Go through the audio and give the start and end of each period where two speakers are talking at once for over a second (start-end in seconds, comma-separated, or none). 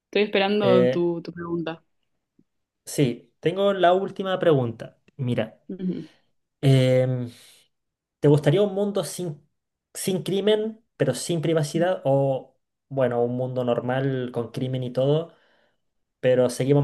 none